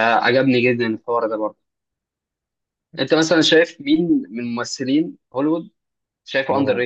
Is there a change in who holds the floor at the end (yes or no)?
no